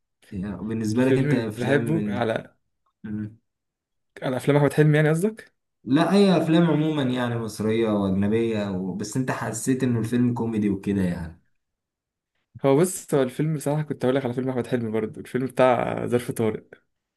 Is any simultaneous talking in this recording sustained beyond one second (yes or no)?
yes